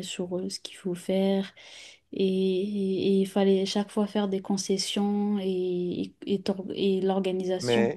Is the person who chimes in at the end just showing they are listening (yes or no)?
no